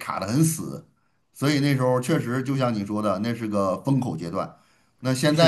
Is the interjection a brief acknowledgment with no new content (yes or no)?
yes